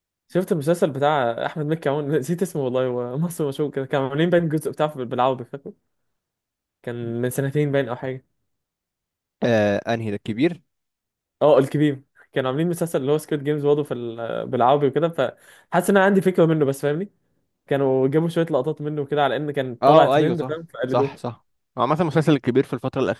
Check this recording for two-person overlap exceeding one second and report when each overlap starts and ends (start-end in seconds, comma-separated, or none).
19.8-21.1